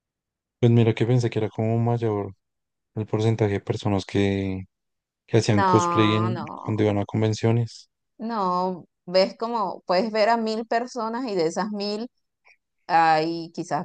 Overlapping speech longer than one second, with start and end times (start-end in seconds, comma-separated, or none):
5.5-6.8